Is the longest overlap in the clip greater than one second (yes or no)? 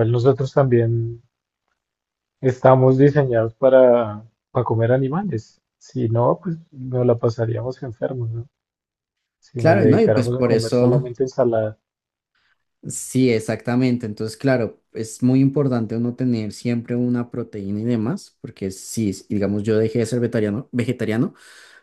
yes